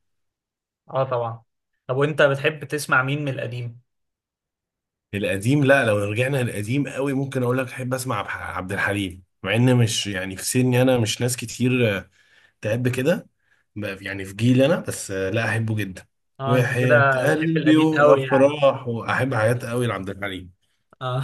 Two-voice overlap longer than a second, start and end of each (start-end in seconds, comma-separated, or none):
16.5-18.6